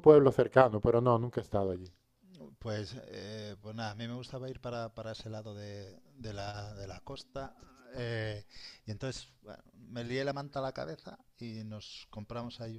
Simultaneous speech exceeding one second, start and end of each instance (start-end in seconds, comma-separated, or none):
none